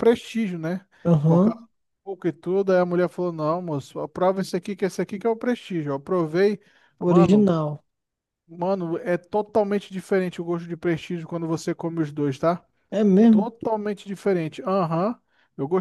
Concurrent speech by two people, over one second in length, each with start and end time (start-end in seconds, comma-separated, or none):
none